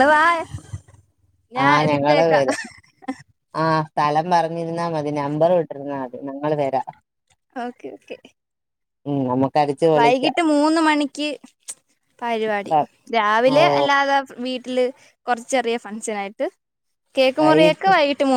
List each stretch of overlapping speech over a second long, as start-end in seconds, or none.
none